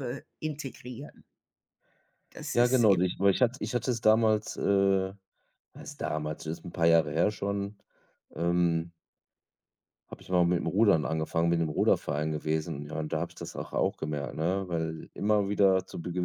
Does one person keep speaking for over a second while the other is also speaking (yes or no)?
no